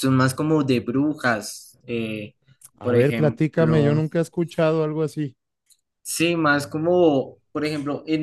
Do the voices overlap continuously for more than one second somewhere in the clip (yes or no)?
yes